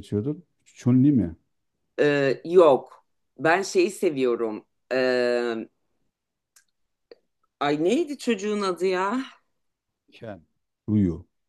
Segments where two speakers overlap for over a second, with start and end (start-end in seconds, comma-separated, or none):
none